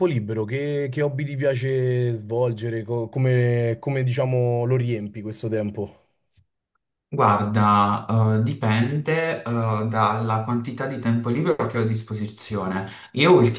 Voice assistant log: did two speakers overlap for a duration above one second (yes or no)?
no